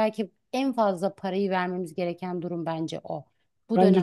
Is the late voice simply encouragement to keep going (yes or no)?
no